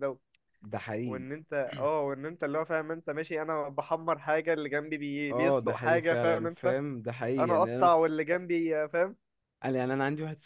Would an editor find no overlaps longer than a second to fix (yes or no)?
no